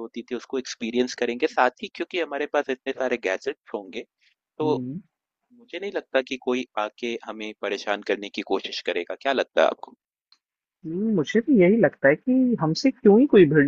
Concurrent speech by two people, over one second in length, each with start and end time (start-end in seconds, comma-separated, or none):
none